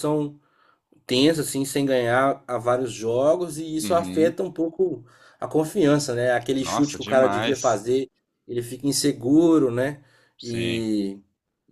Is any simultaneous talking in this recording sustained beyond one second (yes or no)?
yes